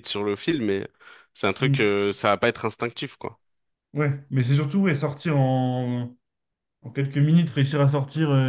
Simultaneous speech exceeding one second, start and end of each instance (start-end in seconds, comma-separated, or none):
none